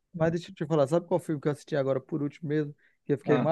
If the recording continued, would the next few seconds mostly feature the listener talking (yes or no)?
no